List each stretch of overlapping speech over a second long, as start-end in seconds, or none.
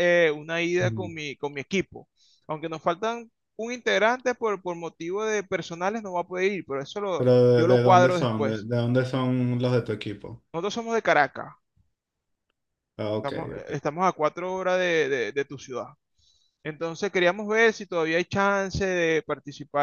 7.2-8.7